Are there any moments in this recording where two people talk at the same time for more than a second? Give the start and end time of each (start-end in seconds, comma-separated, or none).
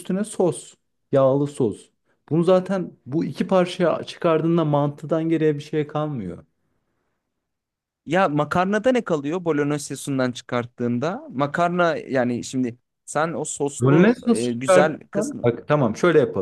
13.8-15.5